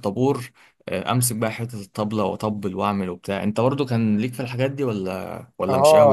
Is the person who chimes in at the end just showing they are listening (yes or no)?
no